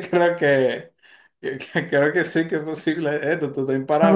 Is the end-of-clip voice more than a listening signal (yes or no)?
yes